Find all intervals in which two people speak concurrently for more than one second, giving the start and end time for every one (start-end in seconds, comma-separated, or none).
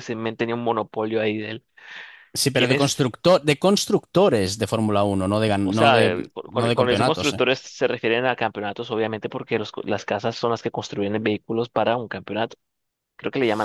5.6-7.4